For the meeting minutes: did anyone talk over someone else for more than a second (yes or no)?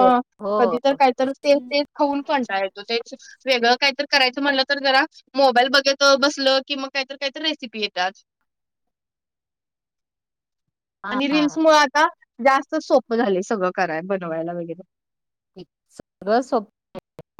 no